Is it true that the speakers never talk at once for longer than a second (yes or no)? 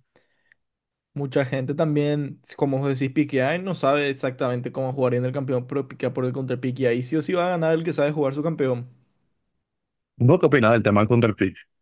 yes